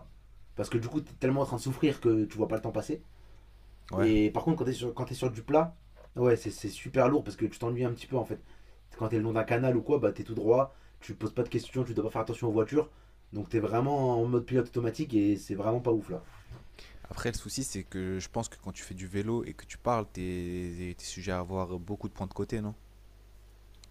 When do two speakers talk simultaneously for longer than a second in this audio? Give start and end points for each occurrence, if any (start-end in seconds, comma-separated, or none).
none